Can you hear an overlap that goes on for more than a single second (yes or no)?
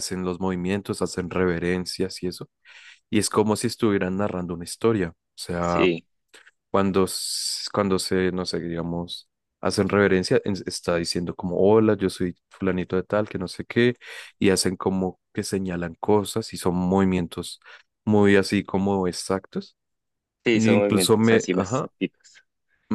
yes